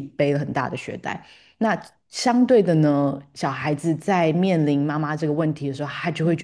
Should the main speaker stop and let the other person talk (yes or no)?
no